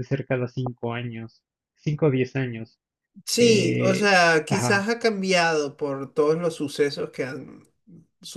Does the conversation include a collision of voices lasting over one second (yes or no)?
yes